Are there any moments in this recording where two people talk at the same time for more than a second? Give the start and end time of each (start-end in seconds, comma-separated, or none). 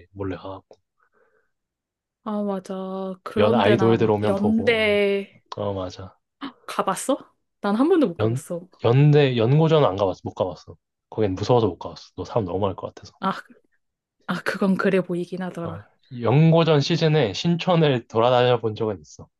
3.4-5.0